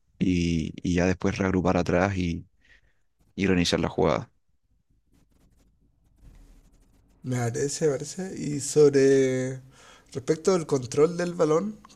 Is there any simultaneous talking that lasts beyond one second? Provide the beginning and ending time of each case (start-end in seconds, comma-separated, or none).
none